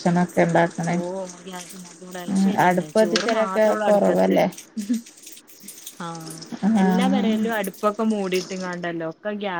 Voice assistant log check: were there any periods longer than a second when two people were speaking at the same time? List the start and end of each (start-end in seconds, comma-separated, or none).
2.7-4.3